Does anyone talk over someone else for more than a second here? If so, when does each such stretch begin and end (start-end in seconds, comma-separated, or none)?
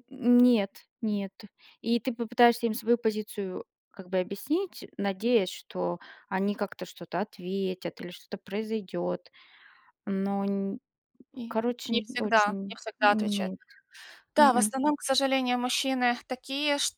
11.5-13.5